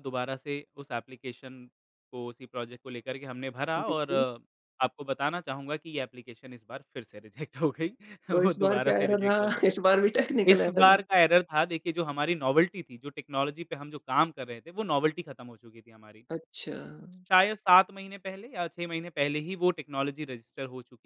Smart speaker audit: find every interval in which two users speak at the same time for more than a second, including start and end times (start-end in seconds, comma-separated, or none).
8.3-9.6